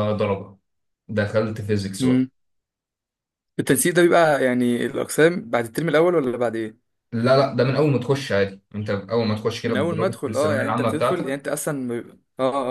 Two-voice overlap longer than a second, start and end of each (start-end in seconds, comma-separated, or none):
9.6-11.4